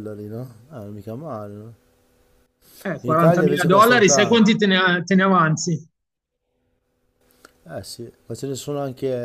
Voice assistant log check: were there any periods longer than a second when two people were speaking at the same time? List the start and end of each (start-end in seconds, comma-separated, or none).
3.0-4.5